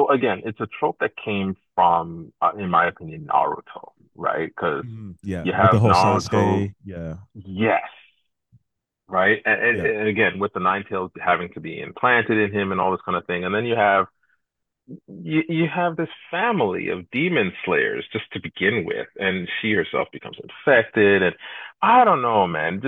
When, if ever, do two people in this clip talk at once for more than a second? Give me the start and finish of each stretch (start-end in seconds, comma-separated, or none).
5.4-6.7